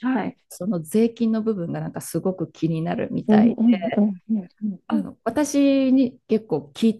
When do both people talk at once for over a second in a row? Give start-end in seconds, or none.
none